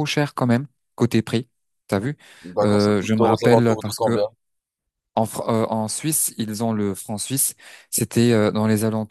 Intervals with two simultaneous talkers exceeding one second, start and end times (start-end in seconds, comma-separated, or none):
2.6-4.2